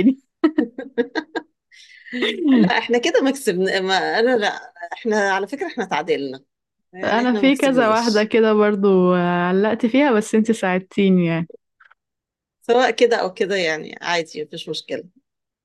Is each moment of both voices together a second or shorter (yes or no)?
no